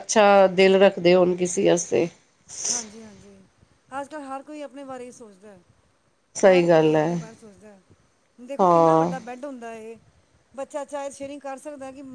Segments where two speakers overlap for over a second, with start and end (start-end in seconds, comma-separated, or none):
none